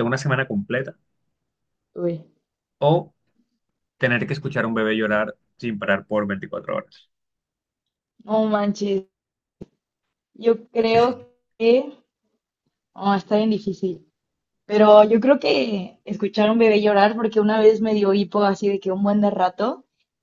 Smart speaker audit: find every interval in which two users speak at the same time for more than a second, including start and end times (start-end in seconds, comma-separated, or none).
none